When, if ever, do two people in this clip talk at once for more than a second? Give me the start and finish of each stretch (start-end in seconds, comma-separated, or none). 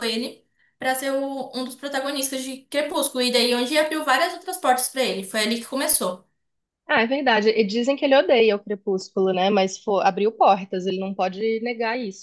none